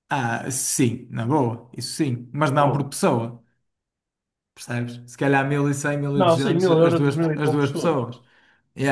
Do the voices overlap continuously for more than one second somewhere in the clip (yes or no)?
yes